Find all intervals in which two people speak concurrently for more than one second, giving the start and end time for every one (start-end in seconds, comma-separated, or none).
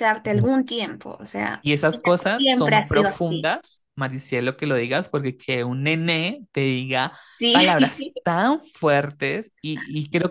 1.6-3.5